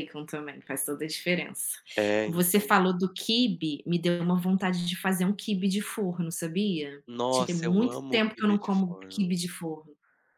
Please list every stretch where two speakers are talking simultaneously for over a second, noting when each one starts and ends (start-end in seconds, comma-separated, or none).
7.0-9.3